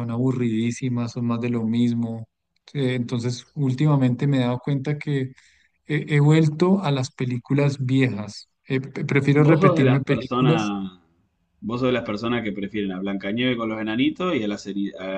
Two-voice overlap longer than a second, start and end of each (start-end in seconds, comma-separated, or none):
9.4-10.7